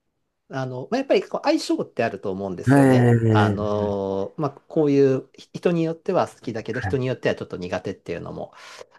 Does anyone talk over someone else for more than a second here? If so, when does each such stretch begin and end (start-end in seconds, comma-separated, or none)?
2.7-4.0